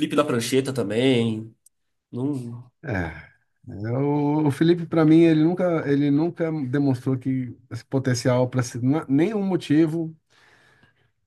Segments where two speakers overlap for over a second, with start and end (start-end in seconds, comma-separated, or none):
none